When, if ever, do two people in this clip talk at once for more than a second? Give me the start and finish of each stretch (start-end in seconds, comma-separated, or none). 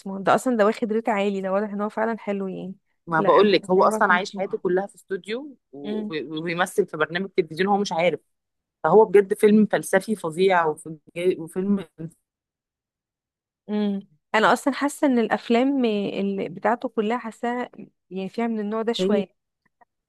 3.2-4.6